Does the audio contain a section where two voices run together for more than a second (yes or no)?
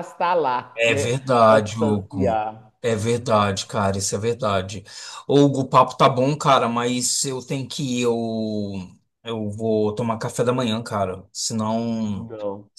yes